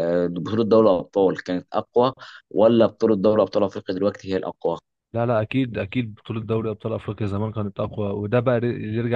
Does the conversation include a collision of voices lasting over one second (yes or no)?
no